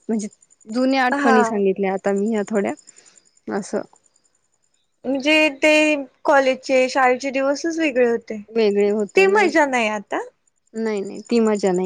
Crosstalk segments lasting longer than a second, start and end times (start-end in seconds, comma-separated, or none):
none